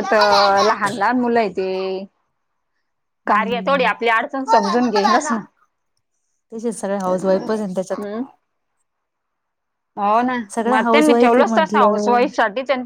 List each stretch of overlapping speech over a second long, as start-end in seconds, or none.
10.7-12.2